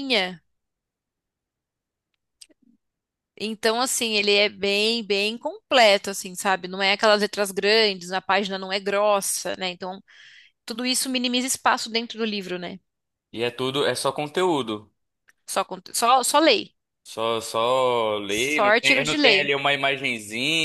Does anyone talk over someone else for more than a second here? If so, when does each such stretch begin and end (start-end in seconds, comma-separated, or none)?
18.3-19.5